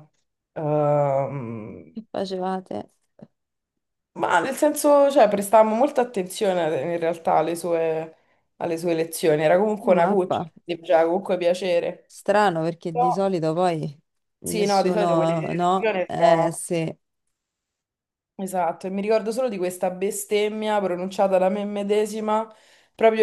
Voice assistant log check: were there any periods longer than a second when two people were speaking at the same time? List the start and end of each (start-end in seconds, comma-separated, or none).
14.4-16.6